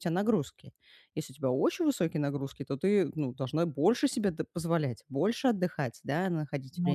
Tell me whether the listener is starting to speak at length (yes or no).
no